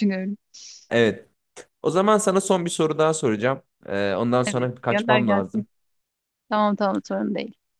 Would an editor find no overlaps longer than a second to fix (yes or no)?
no